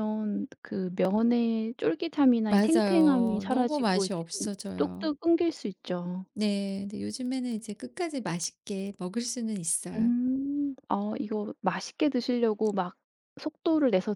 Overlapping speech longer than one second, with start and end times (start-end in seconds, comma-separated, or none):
2.5-5.1